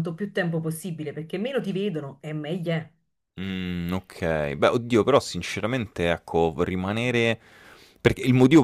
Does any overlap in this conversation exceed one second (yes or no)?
no